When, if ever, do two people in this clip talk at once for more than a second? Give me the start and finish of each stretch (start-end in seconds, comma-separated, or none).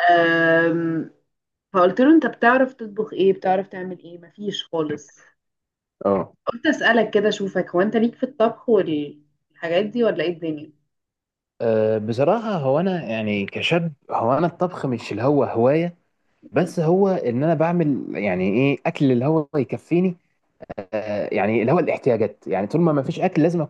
none